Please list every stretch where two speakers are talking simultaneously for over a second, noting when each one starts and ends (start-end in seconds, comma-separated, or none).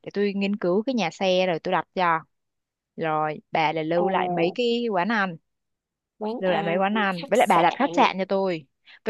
6.4-7.8